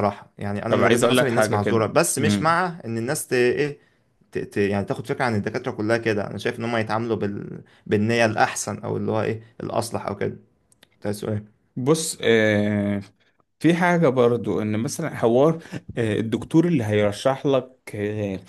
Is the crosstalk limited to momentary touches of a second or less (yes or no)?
no